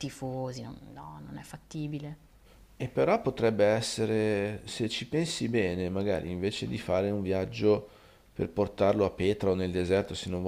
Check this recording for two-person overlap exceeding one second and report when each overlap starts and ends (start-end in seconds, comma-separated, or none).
none